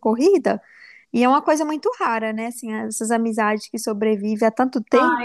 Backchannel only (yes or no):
no